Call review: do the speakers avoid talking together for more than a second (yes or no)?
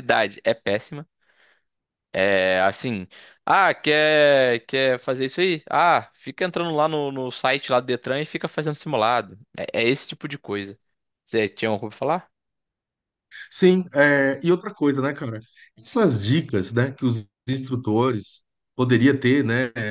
yes